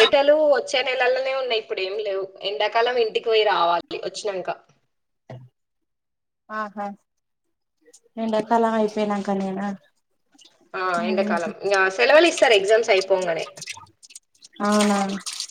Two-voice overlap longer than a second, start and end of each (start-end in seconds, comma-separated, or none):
none